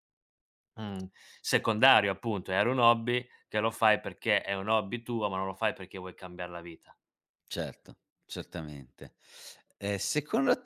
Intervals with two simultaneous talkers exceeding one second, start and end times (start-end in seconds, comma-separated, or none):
none